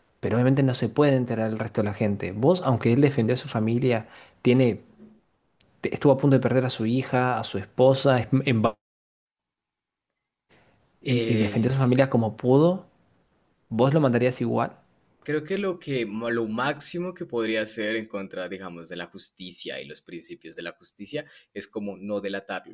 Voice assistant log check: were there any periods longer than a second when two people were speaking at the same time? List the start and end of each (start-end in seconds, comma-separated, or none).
none